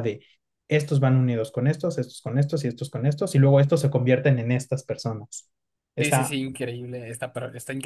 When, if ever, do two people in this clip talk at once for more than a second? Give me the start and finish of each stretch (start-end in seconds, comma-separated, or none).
none